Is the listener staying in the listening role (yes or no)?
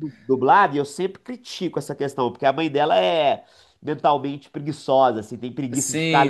yes